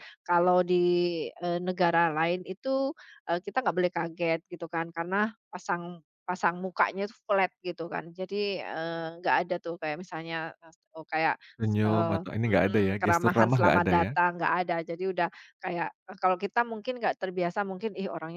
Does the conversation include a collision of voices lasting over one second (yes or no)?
yes